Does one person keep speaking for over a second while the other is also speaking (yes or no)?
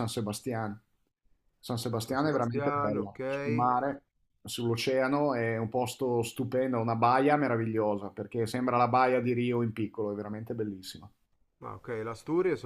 yes